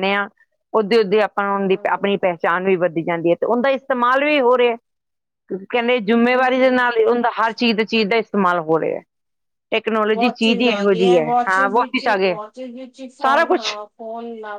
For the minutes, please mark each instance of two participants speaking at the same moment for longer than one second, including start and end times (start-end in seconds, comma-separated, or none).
10.1-12.4